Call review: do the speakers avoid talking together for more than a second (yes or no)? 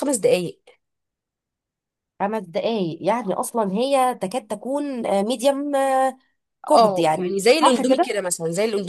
no